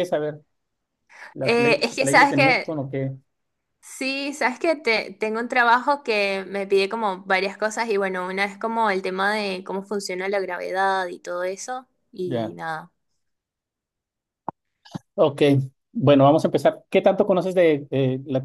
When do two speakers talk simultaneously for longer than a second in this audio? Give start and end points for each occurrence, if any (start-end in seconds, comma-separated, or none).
1.4-2.8